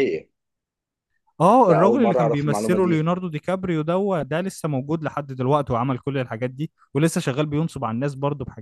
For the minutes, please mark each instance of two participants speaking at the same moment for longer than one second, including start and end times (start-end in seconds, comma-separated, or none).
1.7-3.1